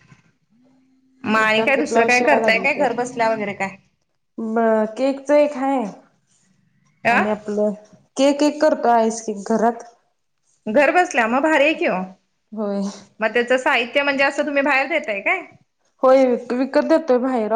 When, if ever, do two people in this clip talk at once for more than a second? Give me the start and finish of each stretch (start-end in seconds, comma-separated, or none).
1.4-3.1